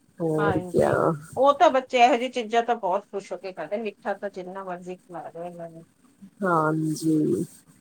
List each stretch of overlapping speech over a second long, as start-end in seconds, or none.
none